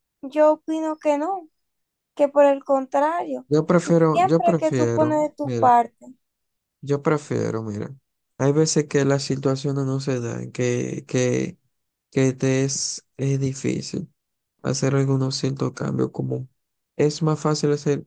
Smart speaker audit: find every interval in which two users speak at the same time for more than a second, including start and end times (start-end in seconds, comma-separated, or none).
4.1-5.7